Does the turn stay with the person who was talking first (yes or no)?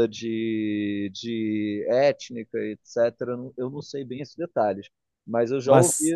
yes